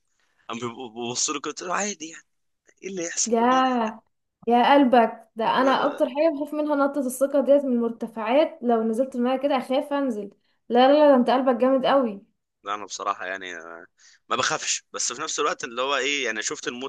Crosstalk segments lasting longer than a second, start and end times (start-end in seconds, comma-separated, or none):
none